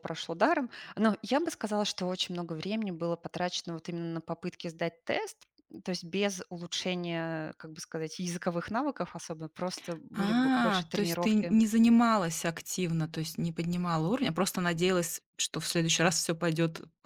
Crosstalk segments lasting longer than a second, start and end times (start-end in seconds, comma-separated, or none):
10.2-11.6